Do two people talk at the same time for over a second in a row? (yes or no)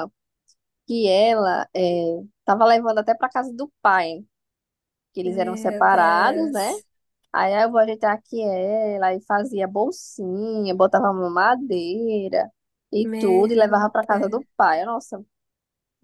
yes